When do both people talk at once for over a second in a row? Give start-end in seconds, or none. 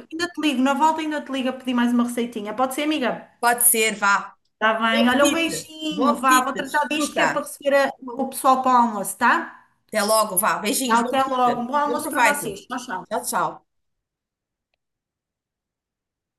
4.9-7.5, 10.9-12.6